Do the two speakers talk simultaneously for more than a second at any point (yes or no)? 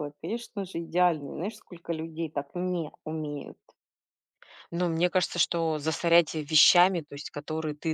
no